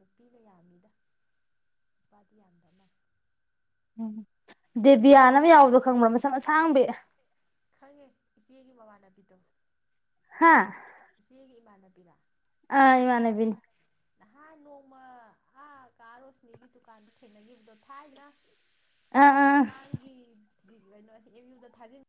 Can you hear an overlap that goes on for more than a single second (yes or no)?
no